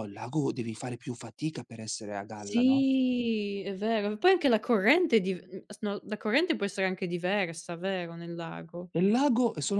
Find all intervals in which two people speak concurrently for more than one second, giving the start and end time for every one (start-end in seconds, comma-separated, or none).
none